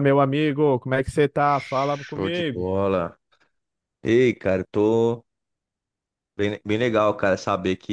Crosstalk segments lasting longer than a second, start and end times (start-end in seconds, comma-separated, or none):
1.4-2.7